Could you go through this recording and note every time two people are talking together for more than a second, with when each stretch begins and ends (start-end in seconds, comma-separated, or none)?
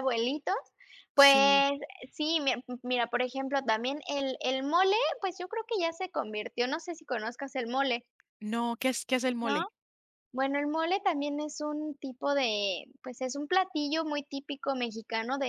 none